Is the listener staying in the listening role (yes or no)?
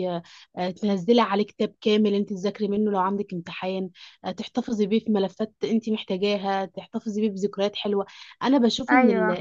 yes